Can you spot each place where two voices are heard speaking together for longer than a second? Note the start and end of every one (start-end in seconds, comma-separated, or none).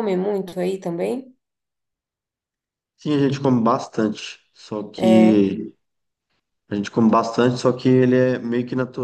none